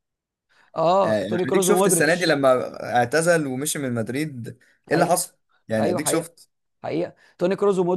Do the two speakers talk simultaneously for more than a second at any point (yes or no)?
yes